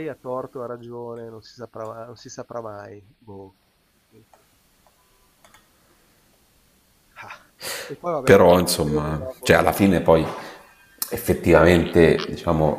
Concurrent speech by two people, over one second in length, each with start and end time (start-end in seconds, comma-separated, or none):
8.2-9.7